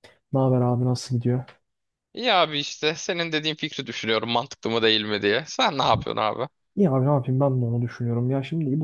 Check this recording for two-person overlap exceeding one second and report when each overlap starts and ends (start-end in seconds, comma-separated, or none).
none